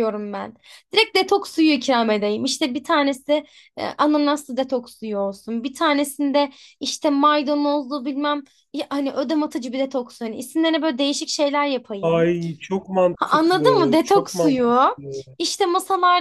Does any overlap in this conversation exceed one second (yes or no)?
yes